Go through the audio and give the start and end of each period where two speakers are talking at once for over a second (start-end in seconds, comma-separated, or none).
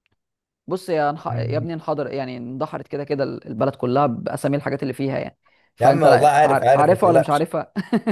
5.8-7.5